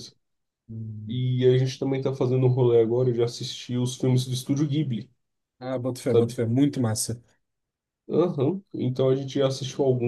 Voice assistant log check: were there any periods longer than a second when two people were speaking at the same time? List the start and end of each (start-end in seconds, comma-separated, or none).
none